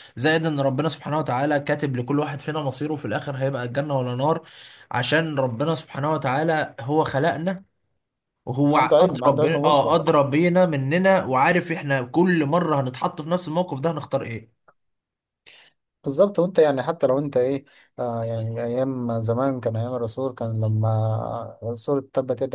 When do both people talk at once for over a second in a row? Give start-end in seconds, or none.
8.8-10.1